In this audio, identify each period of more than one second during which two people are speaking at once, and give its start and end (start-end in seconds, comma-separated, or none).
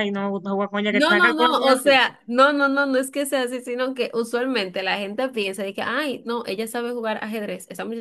0.9-2.1